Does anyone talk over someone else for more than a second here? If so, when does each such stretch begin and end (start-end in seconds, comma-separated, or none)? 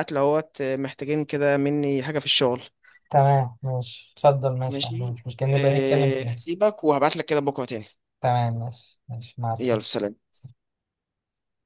4.7-6.4